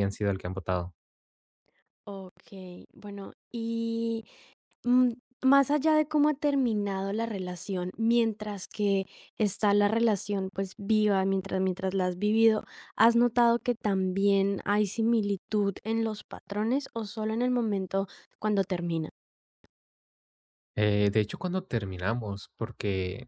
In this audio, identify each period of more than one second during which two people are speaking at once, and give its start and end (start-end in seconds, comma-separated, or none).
none